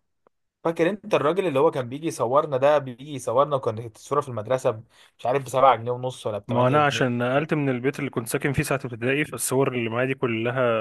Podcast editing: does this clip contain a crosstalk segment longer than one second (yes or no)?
no